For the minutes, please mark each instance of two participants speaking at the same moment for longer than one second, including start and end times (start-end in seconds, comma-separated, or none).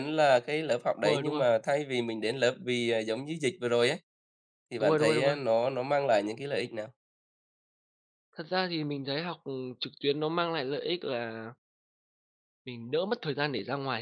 none